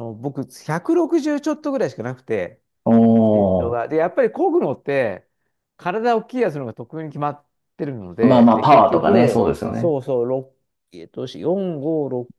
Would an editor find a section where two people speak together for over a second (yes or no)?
yes